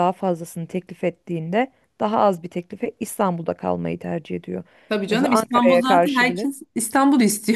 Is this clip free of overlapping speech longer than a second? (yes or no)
no